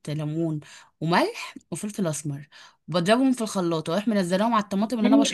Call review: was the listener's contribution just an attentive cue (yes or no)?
no